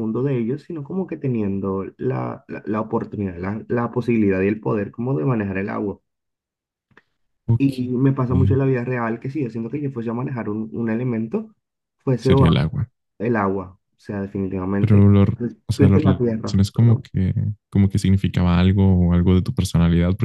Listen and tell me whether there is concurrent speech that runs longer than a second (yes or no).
yes